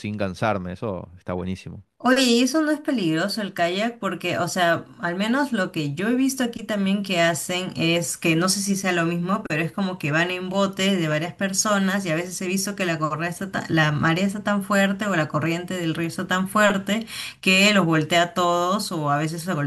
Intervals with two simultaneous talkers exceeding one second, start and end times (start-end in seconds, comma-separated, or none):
none